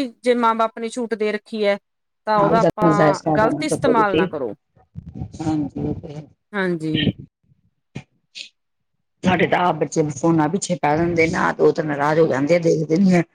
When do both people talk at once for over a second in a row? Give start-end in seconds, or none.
2.4-4.3